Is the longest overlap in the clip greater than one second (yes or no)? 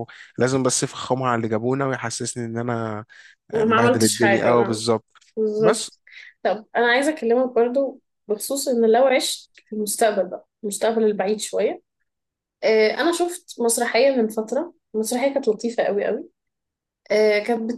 yes